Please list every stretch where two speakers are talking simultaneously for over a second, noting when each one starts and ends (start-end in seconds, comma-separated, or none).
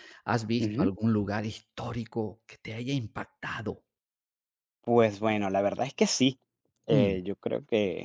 none